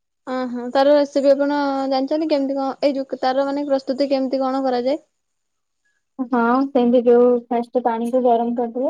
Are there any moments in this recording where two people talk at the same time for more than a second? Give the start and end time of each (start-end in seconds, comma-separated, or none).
none